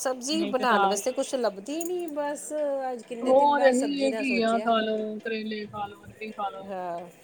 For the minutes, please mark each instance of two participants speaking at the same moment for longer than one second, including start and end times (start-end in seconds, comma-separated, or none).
3.3-4.8